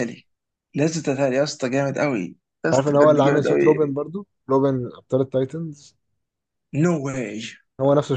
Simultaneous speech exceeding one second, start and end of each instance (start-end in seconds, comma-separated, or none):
2.7-4.0